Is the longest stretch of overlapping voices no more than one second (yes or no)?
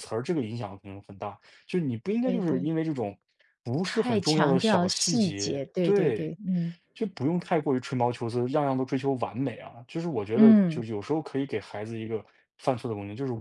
no